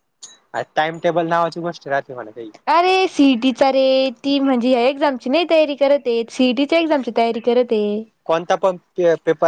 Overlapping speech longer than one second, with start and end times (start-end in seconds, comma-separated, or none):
none